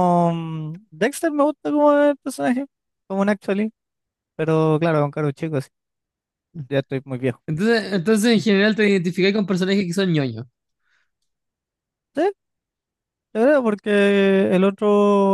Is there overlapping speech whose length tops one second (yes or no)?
no